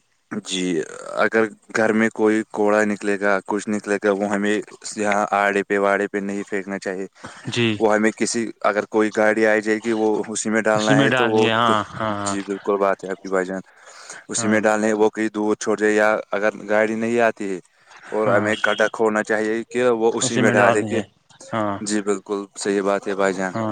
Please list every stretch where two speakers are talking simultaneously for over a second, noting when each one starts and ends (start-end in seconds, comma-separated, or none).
none